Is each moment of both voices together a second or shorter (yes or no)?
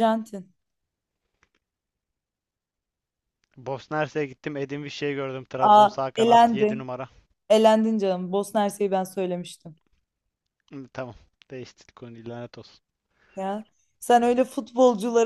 no